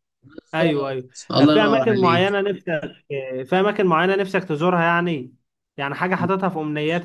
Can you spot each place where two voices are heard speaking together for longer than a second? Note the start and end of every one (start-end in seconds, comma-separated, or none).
0.5-2.2